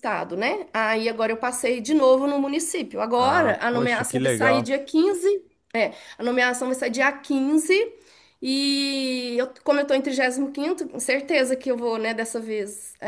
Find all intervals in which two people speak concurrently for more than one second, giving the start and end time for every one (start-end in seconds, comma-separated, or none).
3.2-4.7